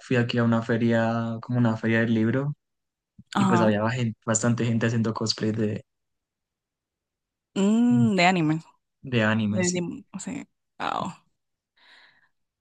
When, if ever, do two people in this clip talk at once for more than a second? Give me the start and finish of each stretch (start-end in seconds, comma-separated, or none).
none